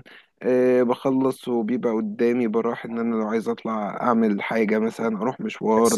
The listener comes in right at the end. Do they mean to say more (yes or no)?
yes